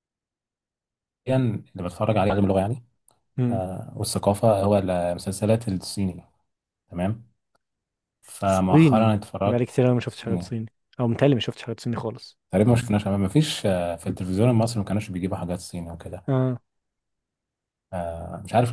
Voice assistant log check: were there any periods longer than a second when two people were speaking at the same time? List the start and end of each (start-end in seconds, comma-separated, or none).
8.5-10.5